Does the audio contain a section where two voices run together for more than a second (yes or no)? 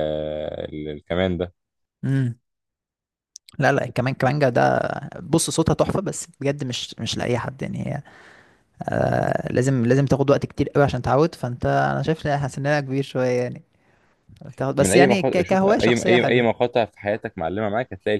yes